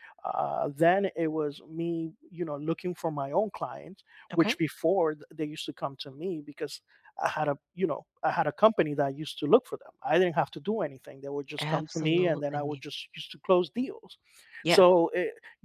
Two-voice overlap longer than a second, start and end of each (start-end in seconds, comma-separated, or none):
11.6-12.8